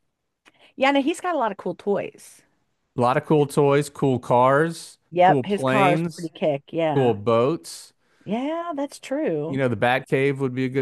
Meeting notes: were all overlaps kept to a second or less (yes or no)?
no